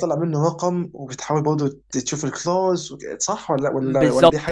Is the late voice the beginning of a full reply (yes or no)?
yes